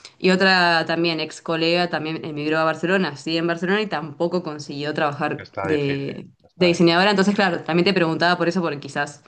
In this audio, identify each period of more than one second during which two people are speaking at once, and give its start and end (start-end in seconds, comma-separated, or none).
5.5-7.0